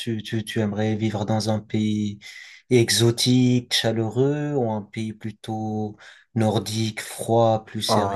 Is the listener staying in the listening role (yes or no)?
no